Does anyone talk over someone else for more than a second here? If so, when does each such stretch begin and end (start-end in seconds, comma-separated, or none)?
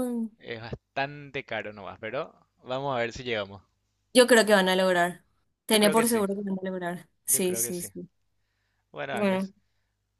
none